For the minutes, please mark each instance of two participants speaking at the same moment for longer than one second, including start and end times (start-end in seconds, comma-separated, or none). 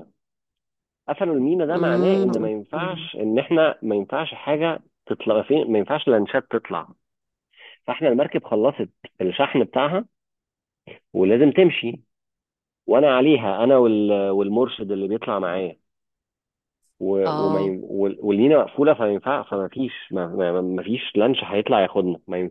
1.7-3.1